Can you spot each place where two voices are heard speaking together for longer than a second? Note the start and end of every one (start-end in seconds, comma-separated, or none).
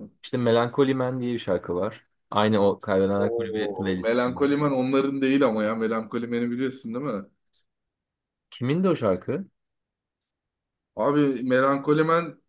3.2-4.5